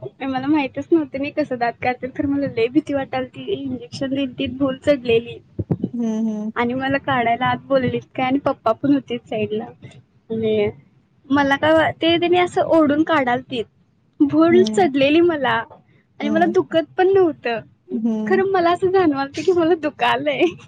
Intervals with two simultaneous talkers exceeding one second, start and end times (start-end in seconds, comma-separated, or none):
none